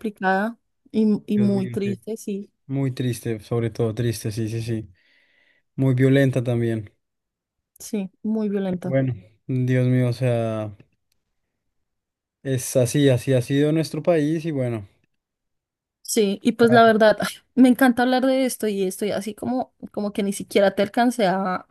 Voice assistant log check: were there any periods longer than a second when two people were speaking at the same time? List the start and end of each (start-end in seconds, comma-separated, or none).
none